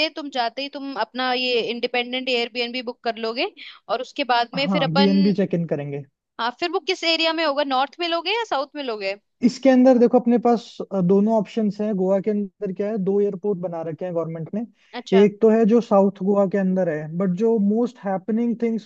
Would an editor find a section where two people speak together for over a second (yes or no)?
no